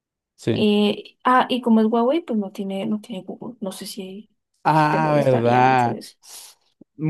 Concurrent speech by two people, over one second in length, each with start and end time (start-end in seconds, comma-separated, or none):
4.7-6.0